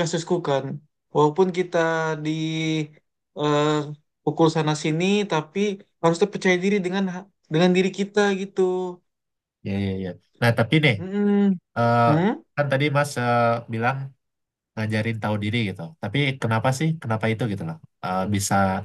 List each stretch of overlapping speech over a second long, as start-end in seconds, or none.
none